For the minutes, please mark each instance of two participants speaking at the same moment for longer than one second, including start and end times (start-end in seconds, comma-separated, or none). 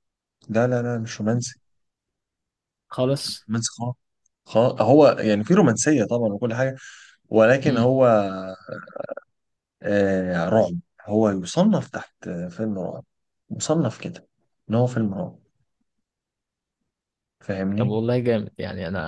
none